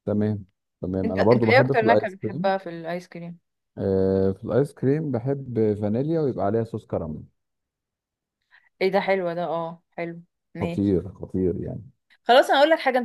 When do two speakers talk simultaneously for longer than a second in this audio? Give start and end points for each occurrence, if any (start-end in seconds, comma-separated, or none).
1.1-2.5